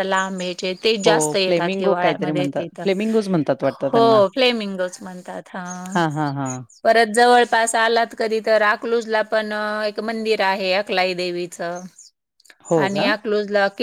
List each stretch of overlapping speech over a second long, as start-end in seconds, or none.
1.0-2.9